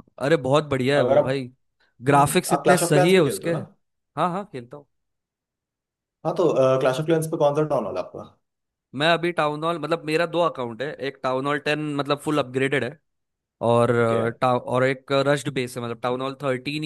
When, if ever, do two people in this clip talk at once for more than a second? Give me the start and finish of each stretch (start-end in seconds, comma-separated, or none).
2.1-3.6